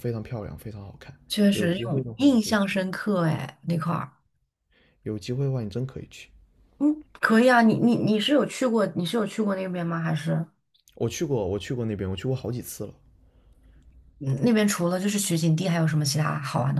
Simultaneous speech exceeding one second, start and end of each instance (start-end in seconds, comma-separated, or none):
1.3-2.8